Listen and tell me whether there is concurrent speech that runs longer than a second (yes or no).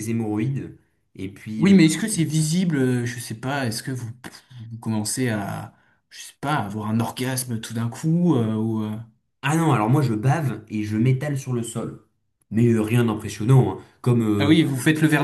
no